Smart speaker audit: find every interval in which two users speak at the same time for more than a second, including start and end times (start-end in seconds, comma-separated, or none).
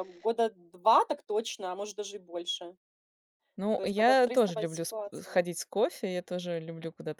3.8-5.4